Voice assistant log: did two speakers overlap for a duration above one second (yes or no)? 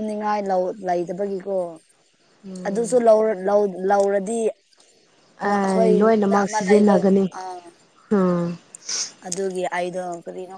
yes